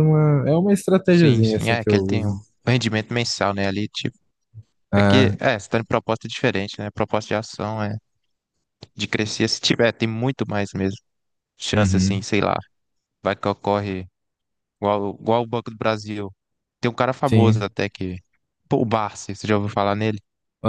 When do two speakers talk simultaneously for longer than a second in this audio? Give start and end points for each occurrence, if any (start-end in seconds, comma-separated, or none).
1.1-2.4